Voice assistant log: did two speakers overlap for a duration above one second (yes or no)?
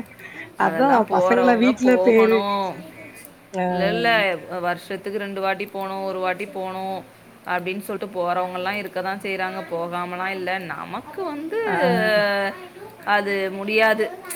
yes